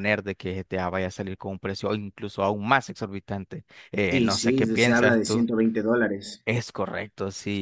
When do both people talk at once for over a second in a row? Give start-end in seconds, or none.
4.1-5.5